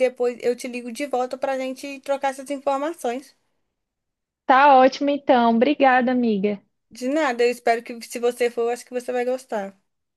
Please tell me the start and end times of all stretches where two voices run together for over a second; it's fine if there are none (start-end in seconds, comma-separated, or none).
none